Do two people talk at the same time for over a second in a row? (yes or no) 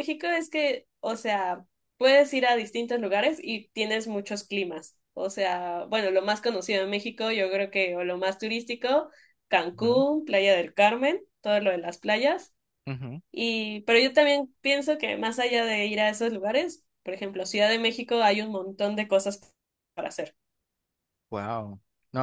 no